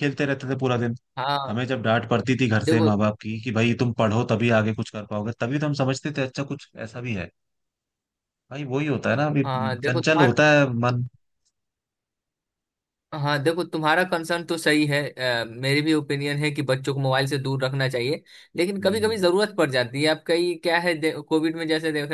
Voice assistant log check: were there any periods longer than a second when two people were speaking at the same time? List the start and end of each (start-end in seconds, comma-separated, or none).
none